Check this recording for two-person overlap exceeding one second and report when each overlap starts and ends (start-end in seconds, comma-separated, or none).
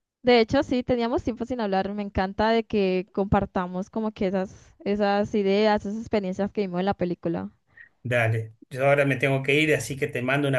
none